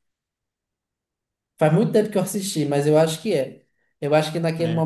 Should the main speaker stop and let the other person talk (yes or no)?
no